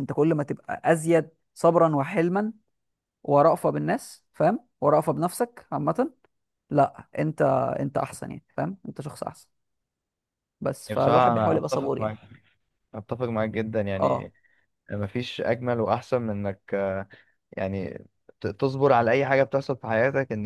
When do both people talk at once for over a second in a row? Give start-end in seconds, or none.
10.9-12.1